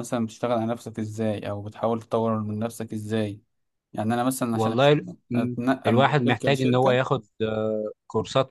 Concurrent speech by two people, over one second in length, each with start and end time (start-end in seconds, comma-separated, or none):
4.5-7.0